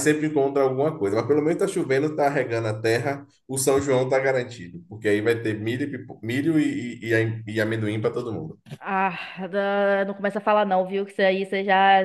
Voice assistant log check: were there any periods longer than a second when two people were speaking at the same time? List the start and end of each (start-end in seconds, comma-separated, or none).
none